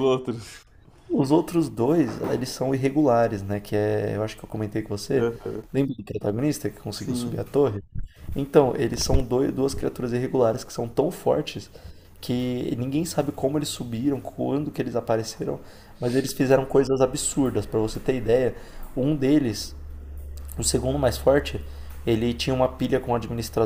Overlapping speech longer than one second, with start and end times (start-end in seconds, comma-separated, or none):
none